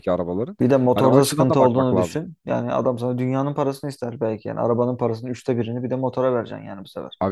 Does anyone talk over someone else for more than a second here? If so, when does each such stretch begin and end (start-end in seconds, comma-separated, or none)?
0.9-2.2